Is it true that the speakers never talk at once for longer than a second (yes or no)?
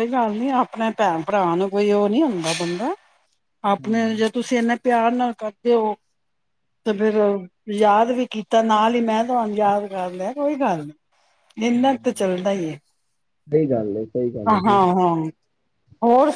yes